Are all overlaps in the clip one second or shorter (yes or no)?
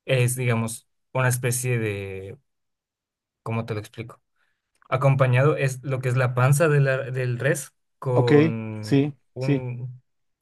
no